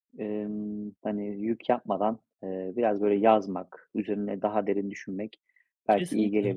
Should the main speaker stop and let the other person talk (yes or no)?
no